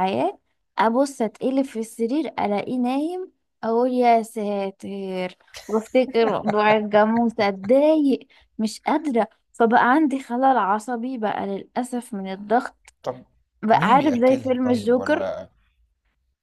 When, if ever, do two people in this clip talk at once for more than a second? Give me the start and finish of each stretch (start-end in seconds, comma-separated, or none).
13.7-15.3